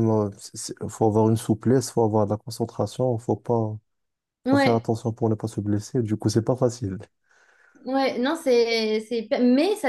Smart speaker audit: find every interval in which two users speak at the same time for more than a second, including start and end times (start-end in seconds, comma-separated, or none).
none